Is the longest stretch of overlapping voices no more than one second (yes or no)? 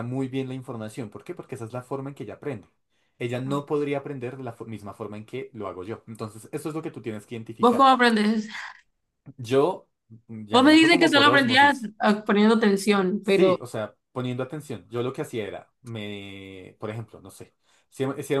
no